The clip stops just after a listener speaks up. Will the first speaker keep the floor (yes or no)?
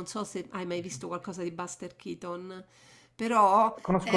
no